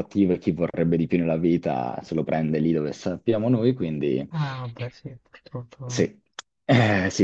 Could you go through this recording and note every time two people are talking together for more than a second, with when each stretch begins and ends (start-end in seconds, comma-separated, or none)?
none